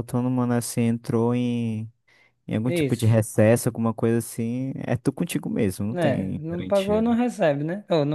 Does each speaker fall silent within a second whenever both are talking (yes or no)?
no